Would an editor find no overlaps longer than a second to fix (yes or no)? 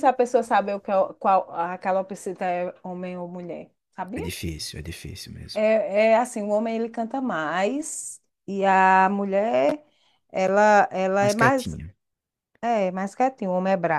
yes